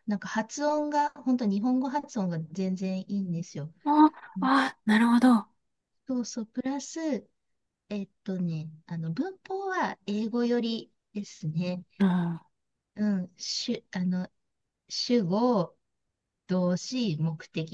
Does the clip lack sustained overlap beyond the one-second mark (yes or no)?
yes